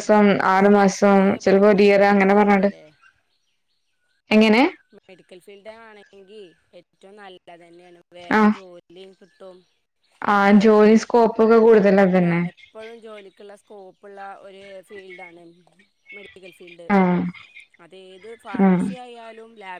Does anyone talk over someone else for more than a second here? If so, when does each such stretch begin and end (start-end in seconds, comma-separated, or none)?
0.6-2.7